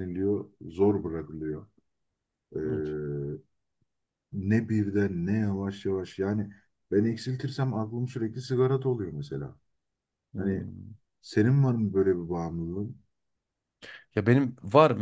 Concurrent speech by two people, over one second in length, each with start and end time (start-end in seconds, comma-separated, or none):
none